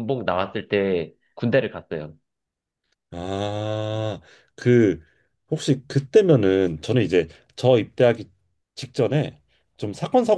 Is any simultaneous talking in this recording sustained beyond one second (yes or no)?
no